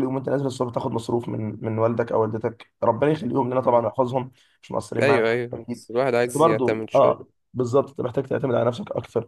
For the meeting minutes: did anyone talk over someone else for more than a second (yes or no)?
yes